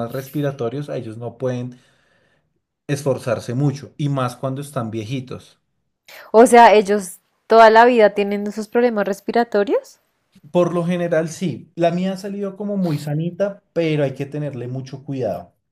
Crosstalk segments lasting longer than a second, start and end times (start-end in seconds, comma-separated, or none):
none